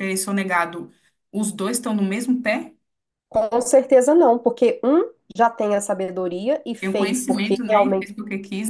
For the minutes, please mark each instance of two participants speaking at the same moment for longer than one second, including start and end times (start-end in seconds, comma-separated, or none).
6.8-8.1